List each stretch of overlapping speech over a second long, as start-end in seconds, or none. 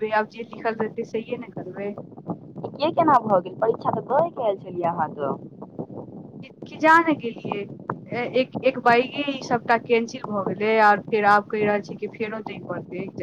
none